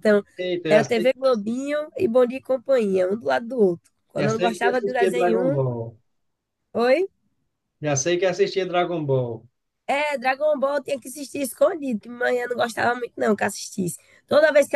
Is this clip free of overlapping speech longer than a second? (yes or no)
no